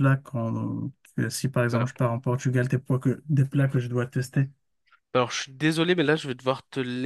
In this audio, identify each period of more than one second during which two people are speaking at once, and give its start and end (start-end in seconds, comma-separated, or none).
none